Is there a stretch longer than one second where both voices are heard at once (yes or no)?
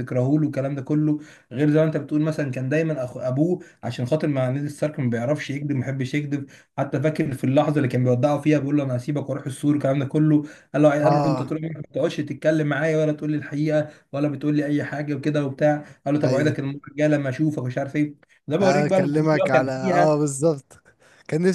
yes